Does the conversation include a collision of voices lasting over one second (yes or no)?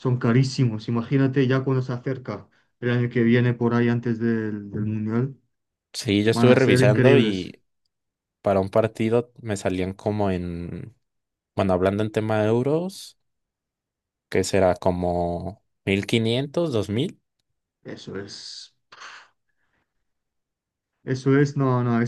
yes